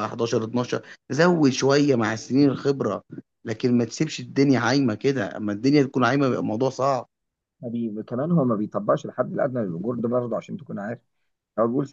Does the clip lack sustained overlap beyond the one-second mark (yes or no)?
yes